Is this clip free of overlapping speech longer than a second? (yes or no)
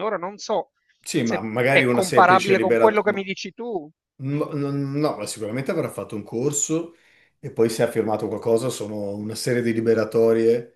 no